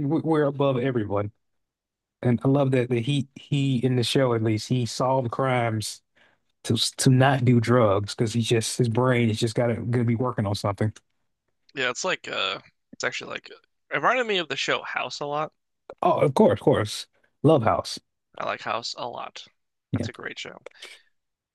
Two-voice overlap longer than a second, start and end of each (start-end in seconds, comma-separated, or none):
none